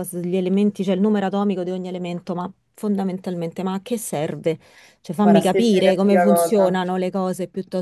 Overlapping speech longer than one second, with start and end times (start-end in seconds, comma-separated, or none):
5.2-6.8